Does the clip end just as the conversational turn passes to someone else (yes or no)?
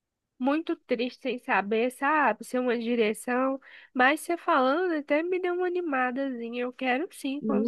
yes